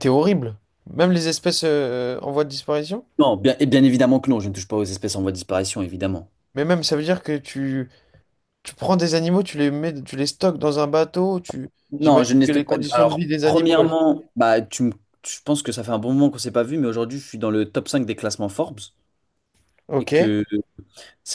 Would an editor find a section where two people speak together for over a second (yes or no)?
yes